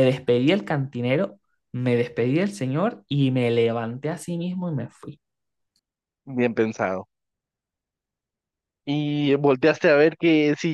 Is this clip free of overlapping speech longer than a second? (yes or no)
yes